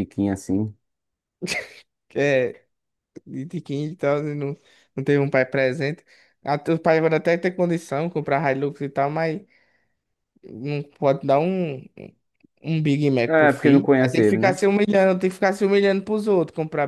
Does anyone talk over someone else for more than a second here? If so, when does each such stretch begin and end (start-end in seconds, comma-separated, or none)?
13.3-14.6